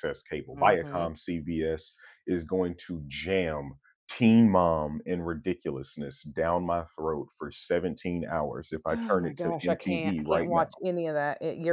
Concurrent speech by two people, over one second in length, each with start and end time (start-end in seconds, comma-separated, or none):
8.9-10.7